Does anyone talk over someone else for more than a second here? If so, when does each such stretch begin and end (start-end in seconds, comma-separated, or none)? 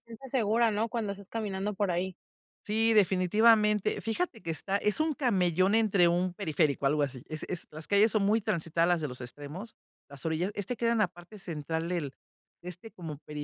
none